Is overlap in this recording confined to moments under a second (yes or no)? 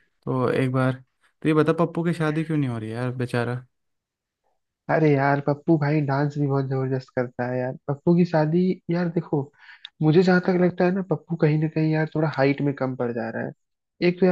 yes